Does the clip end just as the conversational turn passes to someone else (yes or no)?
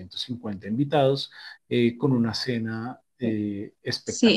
yes